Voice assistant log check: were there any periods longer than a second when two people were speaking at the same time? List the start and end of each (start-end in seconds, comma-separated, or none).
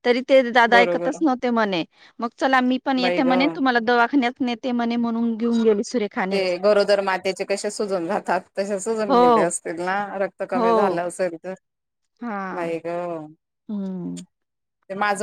none